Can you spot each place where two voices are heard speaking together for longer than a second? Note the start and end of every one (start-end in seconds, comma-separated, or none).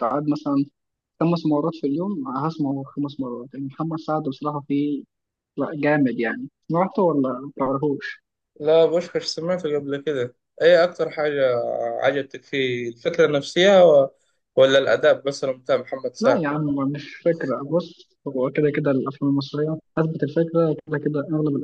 none